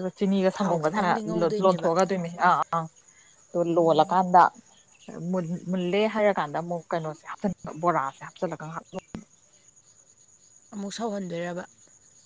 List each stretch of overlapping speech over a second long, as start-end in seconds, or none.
0.5-1.9